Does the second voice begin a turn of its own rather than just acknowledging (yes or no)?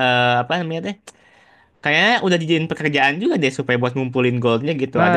yes